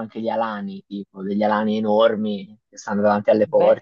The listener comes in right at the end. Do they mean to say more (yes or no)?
yes